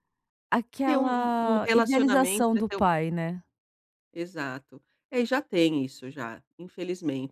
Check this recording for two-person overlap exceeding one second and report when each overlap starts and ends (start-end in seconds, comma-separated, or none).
0.8-2.9